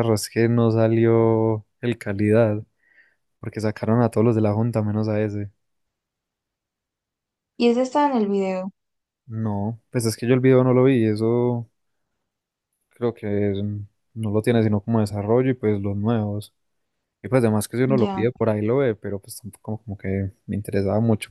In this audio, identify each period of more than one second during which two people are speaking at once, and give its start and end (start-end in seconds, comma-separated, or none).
none